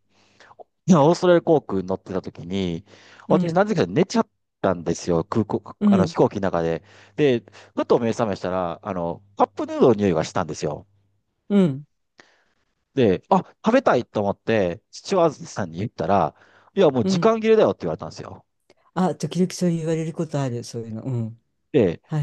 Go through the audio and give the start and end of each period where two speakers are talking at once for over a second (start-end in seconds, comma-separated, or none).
none